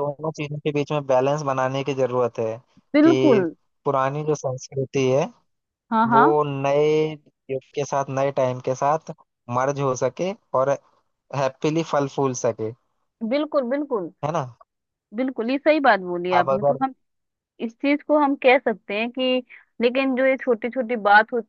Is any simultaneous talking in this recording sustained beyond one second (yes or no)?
no